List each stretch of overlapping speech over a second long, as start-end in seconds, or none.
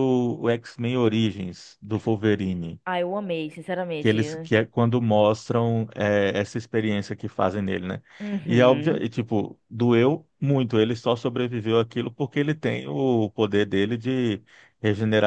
none